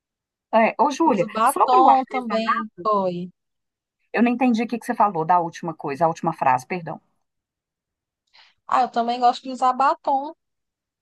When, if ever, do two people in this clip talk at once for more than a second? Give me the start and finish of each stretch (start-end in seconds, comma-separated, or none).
1.0-2.8